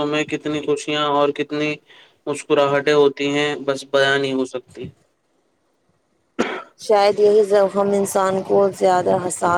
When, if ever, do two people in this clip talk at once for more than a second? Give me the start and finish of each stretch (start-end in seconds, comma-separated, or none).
none